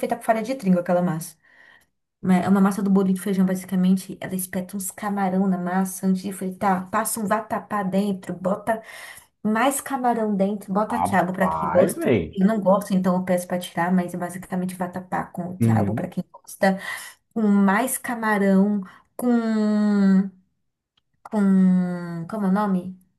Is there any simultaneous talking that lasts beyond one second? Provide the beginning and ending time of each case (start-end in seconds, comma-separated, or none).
10.9-12.4